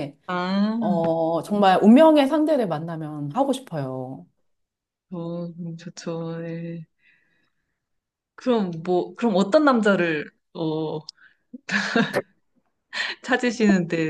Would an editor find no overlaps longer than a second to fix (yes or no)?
yes